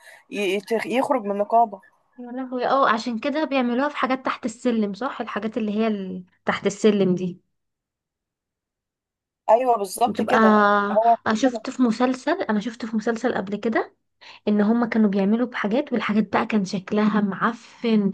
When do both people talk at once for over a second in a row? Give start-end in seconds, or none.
none